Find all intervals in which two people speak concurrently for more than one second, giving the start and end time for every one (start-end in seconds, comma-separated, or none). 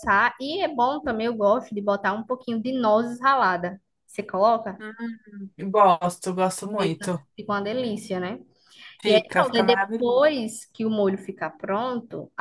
9.1-10.3